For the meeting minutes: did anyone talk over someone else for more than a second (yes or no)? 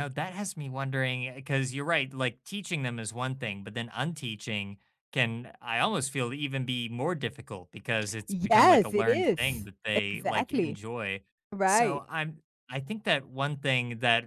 yes